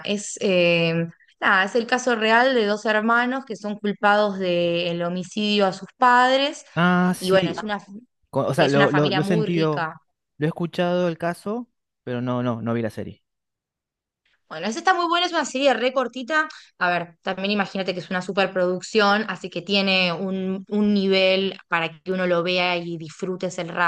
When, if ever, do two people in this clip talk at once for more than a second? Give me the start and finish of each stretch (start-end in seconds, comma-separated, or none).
8.6-9.9